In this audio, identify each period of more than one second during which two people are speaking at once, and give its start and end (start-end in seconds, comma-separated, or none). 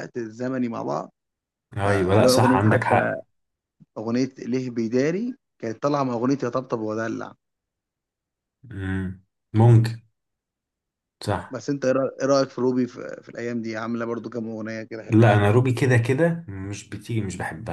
1.8-3.1